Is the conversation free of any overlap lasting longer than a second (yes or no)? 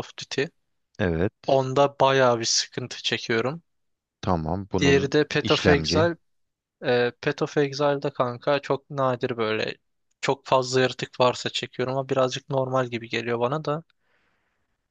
no